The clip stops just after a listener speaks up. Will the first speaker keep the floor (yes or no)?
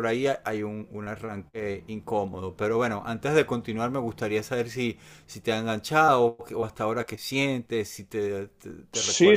no